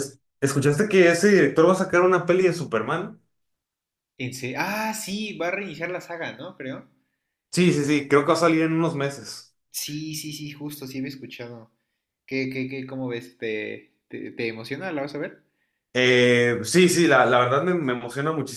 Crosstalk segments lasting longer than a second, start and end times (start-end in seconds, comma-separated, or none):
none